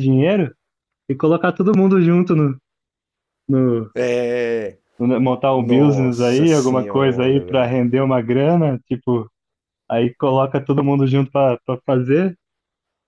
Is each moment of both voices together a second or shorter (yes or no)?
no